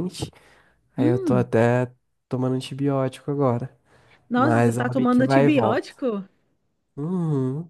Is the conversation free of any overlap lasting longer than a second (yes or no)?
no